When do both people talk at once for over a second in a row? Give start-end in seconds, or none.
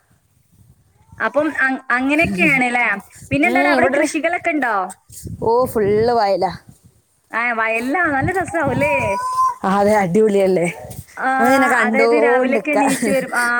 11.4-12.8